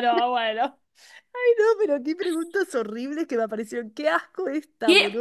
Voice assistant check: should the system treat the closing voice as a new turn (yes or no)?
yes